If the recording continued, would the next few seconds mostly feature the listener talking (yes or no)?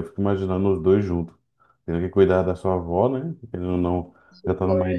no